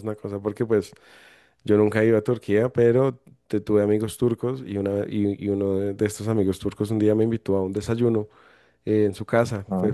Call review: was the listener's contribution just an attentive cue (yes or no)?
yes